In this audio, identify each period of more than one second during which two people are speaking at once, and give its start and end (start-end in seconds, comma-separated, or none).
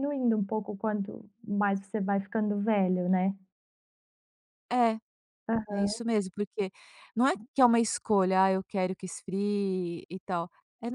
none